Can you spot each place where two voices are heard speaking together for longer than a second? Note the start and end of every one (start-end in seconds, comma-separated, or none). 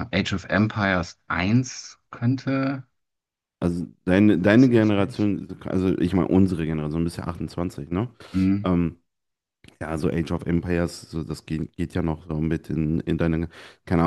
none